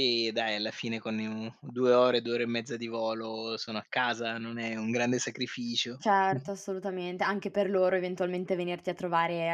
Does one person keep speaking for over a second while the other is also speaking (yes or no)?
no